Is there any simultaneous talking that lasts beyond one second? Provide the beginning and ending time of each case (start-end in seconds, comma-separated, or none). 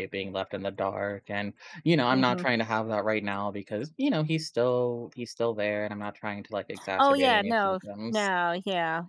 7.0-8.3